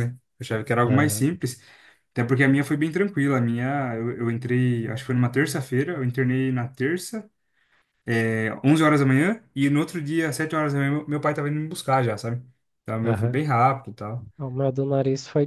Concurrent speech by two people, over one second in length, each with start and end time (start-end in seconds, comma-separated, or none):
none